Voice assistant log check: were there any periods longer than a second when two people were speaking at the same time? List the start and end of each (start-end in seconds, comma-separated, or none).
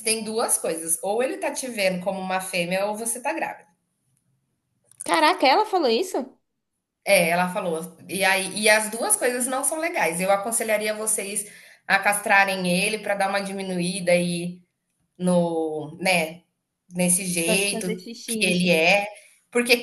17.4-18.8